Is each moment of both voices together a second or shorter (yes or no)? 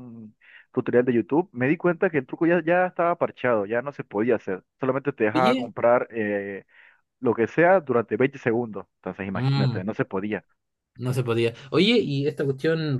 yes